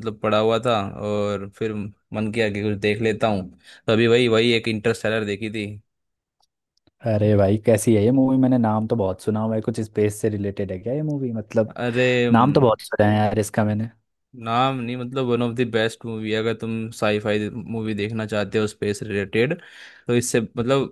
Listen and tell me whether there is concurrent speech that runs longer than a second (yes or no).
no